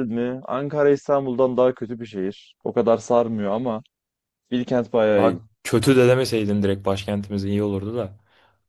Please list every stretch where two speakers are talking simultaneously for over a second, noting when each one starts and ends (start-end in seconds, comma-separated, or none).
none